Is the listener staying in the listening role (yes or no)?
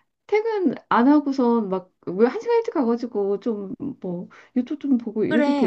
no